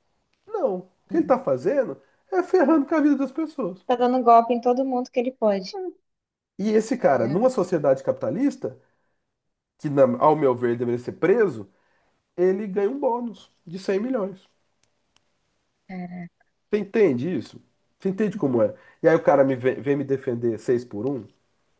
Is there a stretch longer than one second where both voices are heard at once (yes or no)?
no